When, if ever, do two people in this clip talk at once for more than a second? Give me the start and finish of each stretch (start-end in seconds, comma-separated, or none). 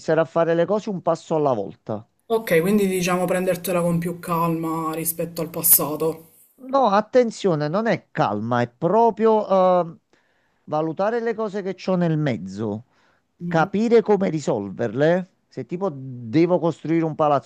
none